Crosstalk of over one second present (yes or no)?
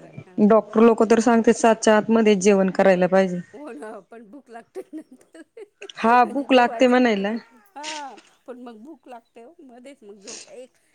yes